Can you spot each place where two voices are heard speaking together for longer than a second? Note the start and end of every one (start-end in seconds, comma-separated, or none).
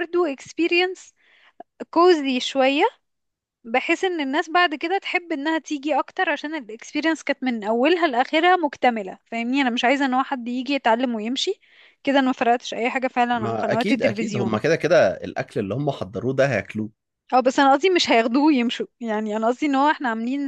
13.3-14.6